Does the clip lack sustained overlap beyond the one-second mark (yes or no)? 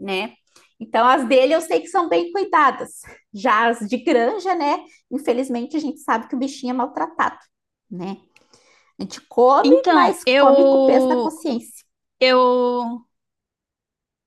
no